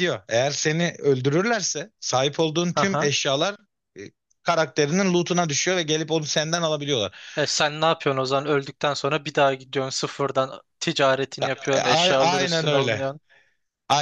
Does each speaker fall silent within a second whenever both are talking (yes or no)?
no